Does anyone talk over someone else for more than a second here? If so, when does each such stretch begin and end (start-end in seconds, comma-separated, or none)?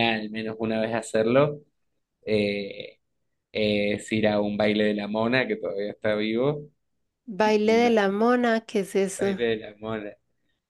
none